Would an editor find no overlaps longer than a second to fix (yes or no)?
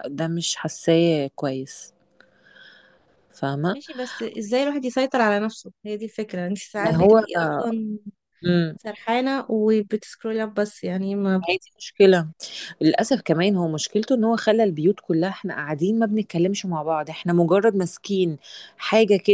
yes